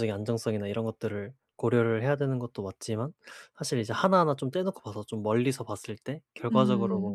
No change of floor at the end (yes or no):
yes